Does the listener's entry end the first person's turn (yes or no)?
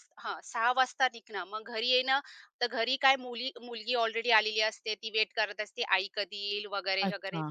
no